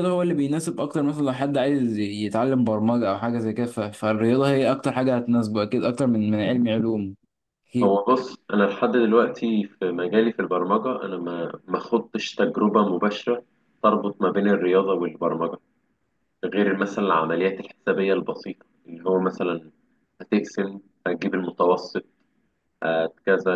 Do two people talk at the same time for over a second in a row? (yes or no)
no